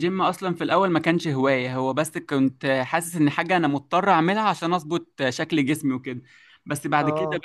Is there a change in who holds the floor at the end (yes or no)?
no